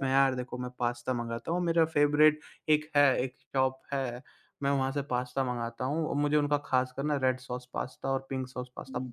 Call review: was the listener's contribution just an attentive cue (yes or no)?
yes